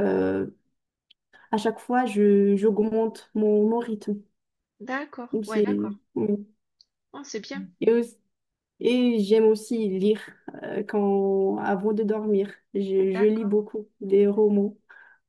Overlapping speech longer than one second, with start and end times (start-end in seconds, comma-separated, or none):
none